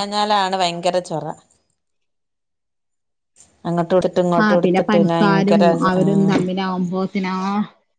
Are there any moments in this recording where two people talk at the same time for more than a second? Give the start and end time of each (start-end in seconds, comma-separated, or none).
4.4-6.4